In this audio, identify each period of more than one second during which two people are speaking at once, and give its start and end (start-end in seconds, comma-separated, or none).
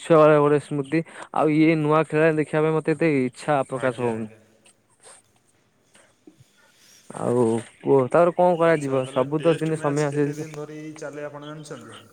8.7-10.5